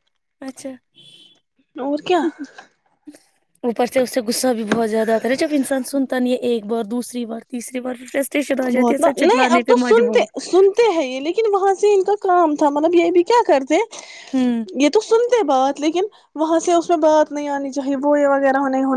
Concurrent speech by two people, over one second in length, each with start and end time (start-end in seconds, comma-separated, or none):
8.8-10.3